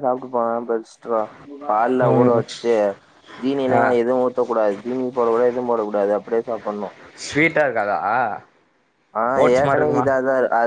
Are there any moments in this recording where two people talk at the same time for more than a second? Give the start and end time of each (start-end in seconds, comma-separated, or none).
none